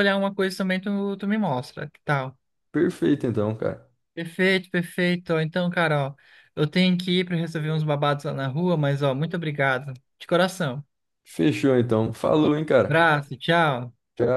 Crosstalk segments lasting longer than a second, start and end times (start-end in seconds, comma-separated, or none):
none